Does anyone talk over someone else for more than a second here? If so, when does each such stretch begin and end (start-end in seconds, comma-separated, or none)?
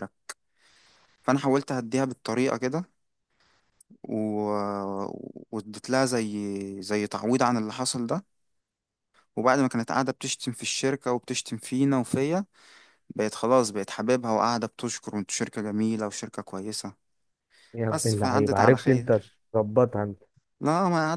17.9-19.4